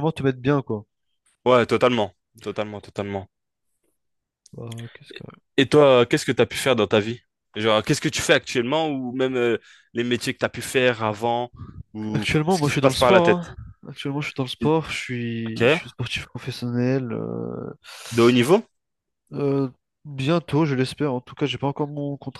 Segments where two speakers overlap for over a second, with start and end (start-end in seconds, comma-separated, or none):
12.1-13.5